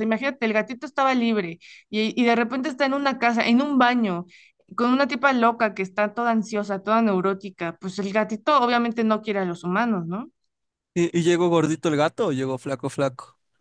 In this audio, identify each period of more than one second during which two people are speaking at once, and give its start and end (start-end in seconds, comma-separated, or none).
none